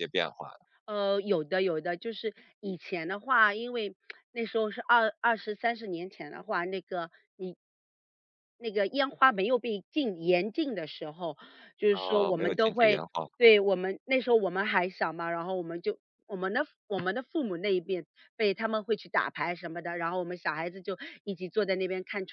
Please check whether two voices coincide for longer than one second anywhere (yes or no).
yes